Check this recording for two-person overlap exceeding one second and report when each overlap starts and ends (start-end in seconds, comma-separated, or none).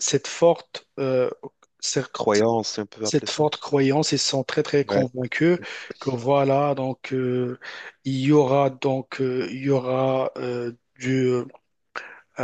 none